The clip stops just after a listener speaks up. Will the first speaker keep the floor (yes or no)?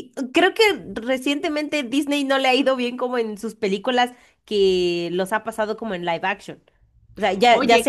yes